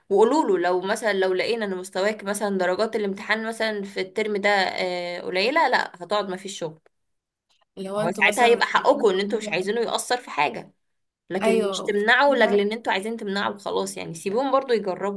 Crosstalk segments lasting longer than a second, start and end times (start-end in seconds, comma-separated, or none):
8.0-9.7, 11.4-12.7